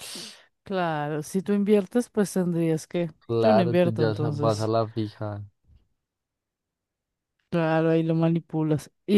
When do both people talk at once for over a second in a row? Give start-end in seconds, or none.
3.3-4.7